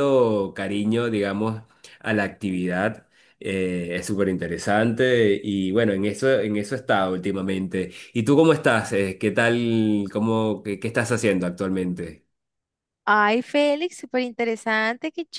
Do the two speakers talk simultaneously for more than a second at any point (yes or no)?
no